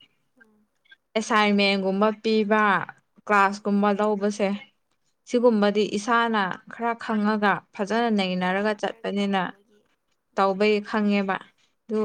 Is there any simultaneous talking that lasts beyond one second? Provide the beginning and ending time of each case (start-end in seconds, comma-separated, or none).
7.8-9.4